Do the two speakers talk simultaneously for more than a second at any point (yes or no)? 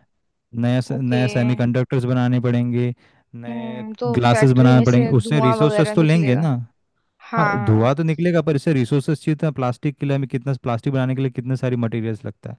yes